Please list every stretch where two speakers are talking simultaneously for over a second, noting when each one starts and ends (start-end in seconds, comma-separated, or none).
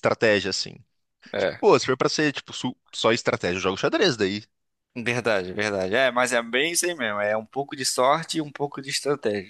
none